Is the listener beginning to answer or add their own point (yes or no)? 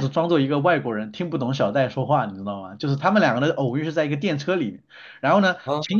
no